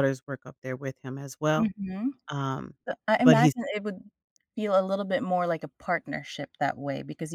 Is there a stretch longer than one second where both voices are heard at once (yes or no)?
no